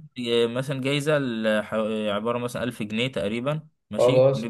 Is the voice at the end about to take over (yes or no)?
no